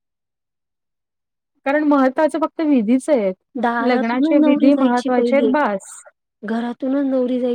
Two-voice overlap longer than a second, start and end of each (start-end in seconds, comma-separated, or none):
3.9-5.5